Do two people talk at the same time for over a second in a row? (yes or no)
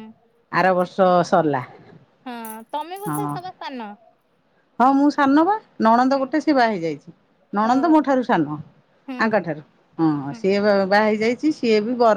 no